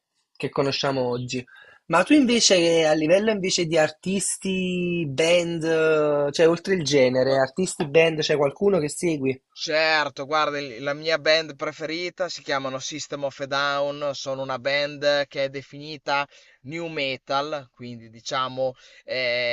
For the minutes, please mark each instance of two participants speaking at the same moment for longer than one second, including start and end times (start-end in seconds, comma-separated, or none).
none